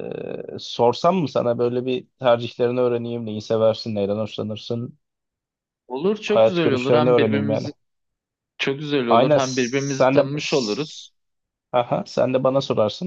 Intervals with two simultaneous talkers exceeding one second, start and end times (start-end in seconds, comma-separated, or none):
6.2-7.7, 9.1-11.1